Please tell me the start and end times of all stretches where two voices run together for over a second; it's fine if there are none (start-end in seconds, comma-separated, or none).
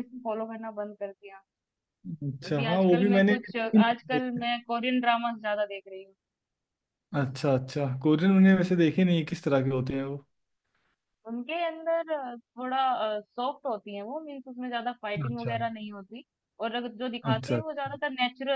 2.5-4.4